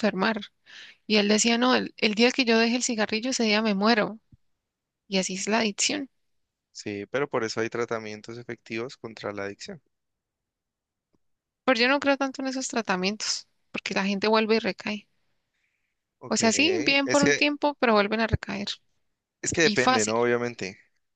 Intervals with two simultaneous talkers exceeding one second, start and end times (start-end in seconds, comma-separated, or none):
16.3-17.5